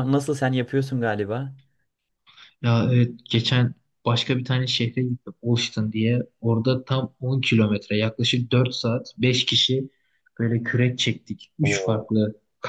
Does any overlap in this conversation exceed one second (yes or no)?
no